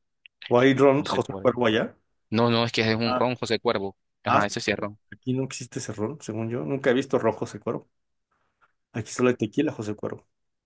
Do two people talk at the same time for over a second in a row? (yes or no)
no